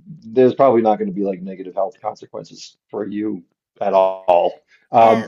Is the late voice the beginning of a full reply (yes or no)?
no